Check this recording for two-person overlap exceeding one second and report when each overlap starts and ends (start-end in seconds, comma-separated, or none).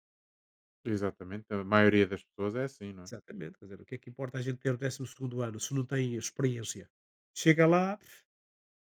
none